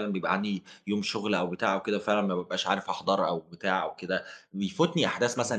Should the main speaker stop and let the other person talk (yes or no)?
no